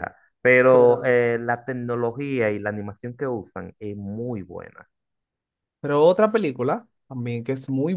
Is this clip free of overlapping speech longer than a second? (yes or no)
yes